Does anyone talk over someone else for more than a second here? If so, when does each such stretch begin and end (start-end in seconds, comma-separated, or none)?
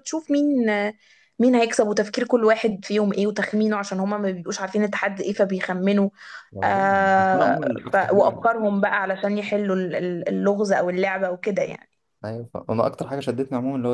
6.6-8.4